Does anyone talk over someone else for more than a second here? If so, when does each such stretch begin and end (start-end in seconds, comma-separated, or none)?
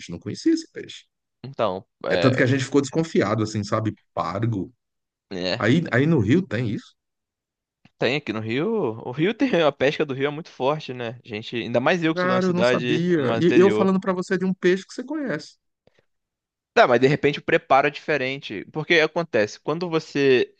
12.1-13.9